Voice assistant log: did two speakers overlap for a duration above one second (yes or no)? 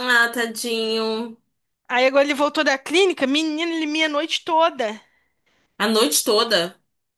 no